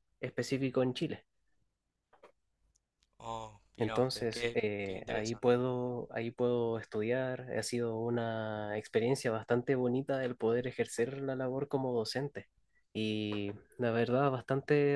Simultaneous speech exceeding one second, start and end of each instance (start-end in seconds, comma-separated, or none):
3.8-5.6